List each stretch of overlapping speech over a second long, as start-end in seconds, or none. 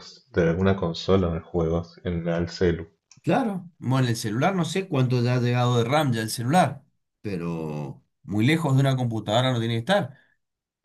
none